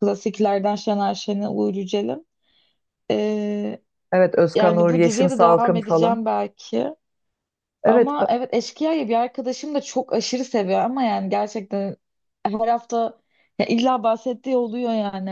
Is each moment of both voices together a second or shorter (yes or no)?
no